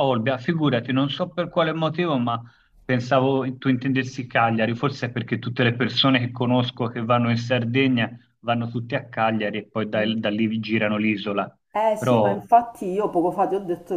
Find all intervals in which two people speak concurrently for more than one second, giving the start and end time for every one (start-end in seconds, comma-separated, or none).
none